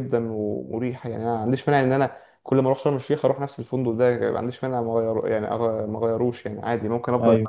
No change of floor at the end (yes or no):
yes